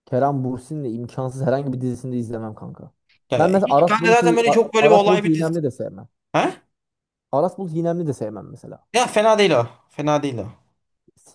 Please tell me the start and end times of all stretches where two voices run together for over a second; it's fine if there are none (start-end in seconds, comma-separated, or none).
3.4-5.5